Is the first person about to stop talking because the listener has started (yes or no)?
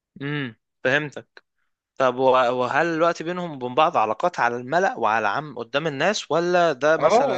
yes